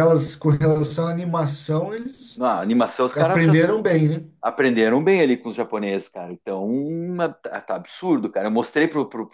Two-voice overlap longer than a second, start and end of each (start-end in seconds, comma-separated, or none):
none